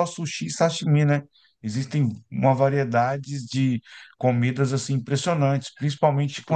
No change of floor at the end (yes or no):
yes